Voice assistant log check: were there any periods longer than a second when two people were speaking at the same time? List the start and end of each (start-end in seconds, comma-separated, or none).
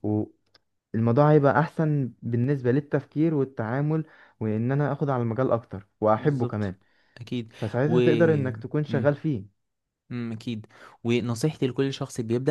none